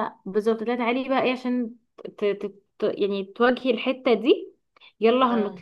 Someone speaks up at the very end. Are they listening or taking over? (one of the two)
listening